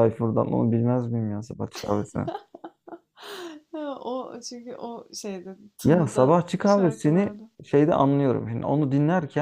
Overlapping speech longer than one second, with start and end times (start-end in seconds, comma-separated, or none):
5.8-7.5